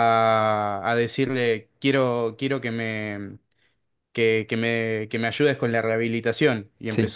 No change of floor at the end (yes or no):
yes